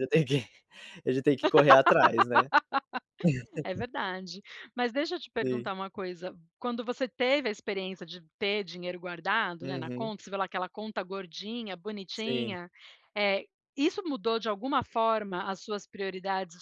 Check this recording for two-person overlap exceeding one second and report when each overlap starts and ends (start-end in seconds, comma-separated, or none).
none